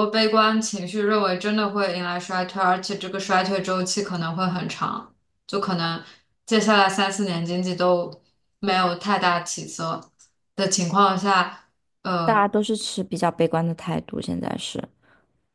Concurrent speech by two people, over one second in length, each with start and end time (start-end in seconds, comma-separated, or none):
none